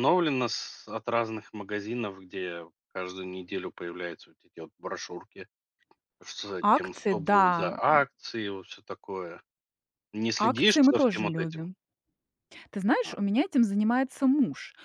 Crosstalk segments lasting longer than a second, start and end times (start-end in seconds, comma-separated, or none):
6.6-8.0, 10.4-11.7